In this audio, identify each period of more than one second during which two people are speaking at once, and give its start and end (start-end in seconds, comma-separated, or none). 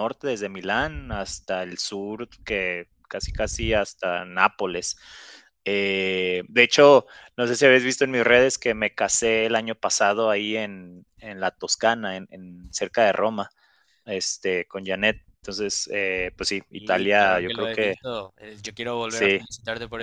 16.8-17.9